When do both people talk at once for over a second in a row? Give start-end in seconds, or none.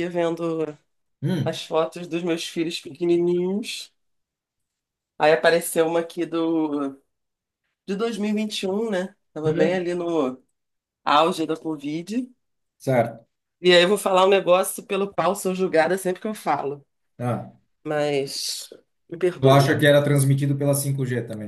none